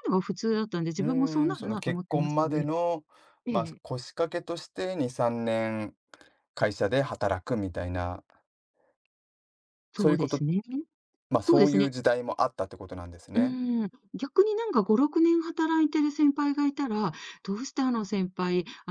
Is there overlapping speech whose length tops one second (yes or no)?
yes